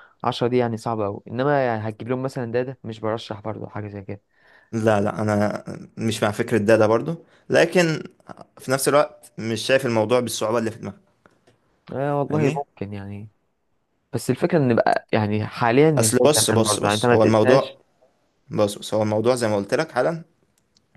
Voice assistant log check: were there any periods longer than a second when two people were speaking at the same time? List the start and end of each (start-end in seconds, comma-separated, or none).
16.0-17.8